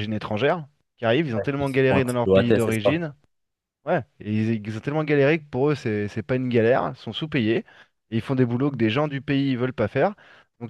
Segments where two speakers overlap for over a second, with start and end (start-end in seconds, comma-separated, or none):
1.4-3.0